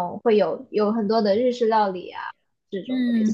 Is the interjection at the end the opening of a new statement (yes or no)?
yes